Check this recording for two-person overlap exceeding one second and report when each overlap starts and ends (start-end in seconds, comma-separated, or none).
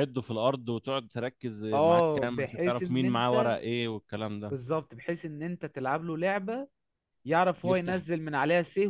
1.7-3.6